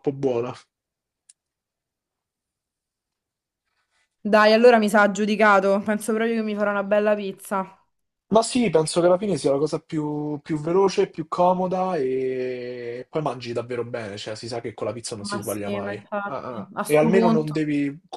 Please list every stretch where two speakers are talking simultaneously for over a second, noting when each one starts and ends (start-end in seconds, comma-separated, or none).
15.2-17.6